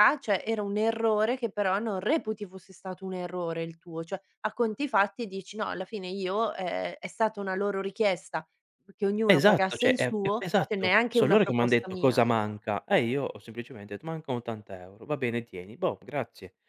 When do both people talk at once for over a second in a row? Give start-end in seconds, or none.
9.3-12.2